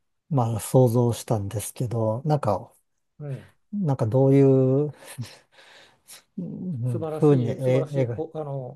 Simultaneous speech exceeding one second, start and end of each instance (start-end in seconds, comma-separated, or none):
6.8-8.2